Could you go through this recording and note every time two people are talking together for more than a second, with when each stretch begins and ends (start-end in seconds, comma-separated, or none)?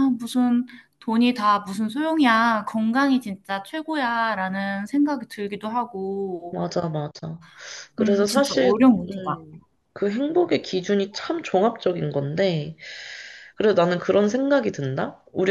8.0-9.4